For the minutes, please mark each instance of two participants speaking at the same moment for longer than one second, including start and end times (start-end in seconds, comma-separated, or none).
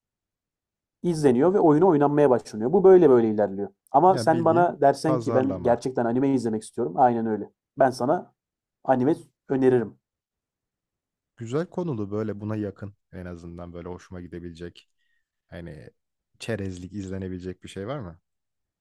4.1-5.8